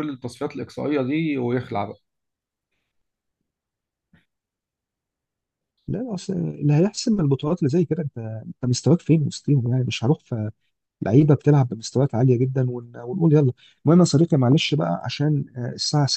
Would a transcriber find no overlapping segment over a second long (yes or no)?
yes